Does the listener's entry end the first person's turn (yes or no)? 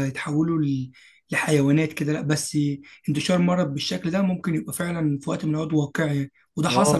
yes